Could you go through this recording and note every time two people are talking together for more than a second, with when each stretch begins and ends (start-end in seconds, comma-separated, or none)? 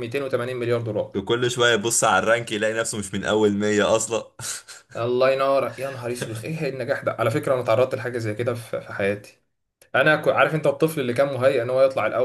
none